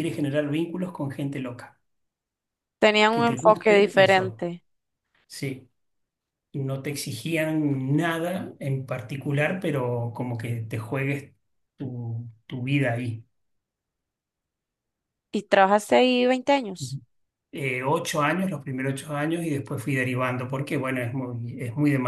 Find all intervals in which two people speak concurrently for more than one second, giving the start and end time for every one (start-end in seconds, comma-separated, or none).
3.1-4.5